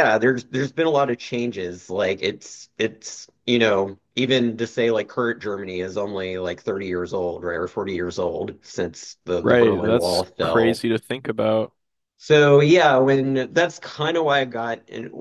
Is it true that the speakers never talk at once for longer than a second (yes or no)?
no